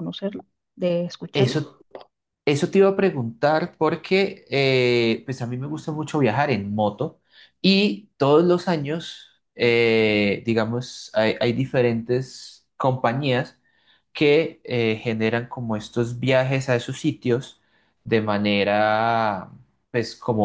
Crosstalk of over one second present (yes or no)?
no